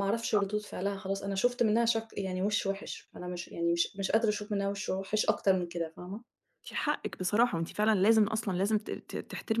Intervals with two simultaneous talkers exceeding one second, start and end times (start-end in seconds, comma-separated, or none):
none